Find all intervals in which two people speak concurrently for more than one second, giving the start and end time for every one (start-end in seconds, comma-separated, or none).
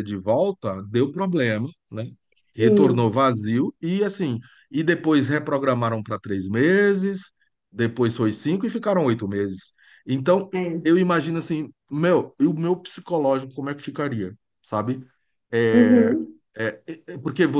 none